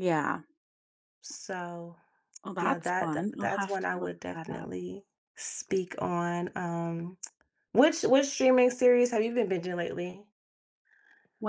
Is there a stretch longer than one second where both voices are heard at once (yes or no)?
yes